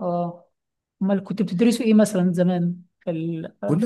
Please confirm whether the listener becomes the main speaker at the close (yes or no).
yes